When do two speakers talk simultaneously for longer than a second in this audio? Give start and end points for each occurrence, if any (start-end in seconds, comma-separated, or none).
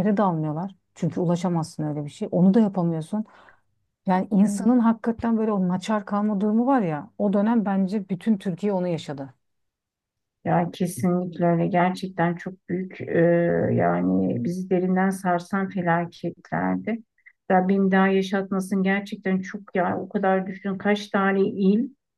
none